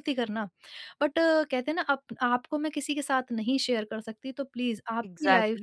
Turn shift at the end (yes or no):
yes